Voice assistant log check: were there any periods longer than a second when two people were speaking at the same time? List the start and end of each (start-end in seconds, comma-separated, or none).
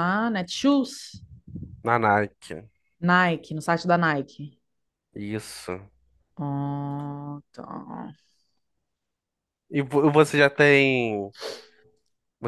none